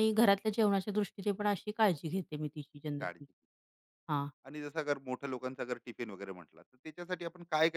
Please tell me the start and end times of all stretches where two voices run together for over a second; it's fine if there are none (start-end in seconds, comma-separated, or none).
none